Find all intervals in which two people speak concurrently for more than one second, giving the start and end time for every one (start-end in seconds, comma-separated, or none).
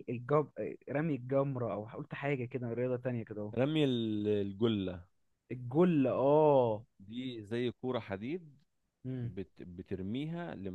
none